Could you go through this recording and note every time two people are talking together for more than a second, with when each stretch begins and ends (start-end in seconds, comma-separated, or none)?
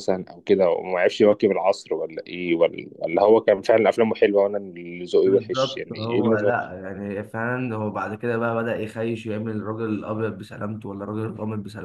5.2-6.7